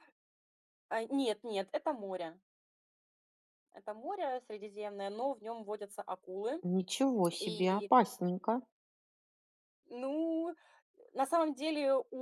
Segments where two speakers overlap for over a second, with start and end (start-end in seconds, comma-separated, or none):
none